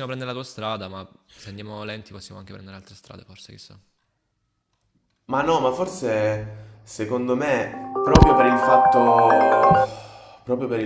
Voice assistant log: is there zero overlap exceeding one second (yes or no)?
yes